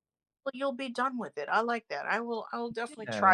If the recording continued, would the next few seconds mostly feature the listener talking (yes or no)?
yes